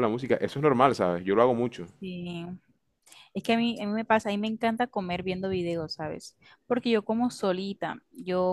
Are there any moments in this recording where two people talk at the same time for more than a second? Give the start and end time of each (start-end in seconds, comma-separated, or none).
none